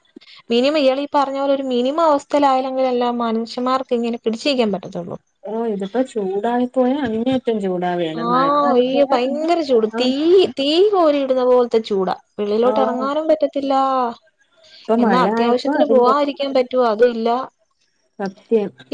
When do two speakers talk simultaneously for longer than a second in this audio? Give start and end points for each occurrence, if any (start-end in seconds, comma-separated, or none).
15.0-16.4